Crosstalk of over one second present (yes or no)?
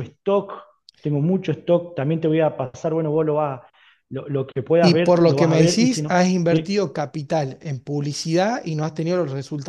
yes